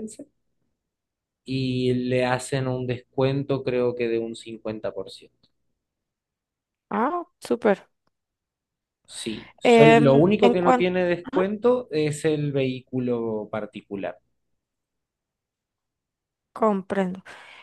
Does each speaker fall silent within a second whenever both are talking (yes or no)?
no